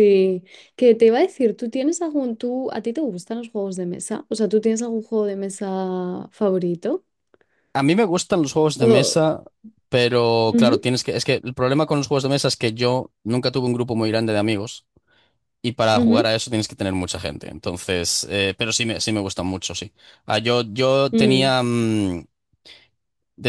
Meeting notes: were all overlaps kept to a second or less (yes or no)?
yes